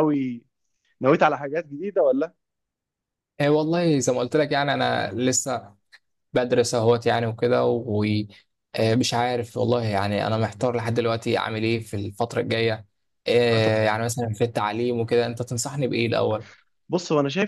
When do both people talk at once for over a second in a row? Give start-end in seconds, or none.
none